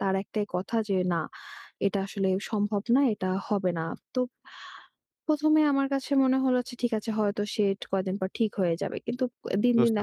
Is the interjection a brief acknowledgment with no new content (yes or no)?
yes